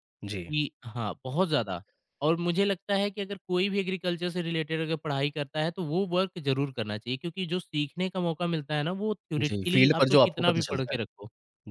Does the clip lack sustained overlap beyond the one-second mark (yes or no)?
no